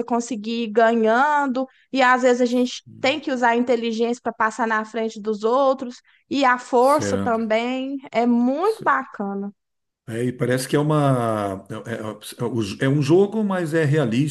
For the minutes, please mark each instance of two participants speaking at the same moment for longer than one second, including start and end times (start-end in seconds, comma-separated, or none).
none